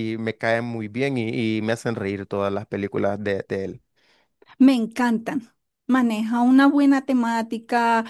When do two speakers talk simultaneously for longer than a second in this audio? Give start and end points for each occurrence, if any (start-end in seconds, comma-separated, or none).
none